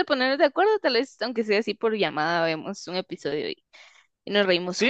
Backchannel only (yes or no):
no